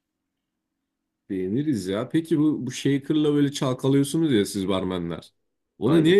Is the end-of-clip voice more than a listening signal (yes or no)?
no